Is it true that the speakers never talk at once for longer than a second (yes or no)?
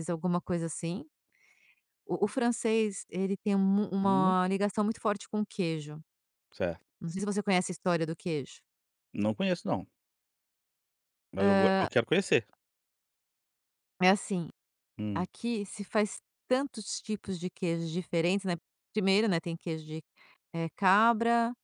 yes